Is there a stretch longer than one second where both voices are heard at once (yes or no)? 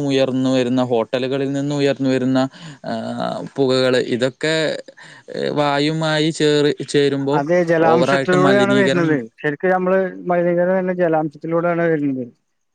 yes